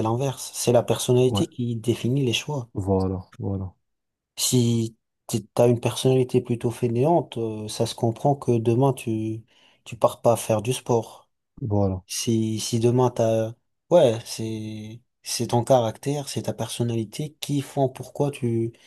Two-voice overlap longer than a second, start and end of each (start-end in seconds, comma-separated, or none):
none